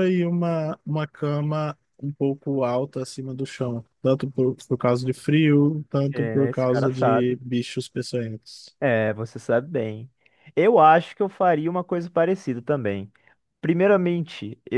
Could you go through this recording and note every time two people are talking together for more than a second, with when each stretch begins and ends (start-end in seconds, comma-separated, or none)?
6.1-7.4